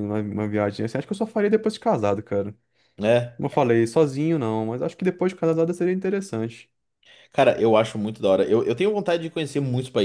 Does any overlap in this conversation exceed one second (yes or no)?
no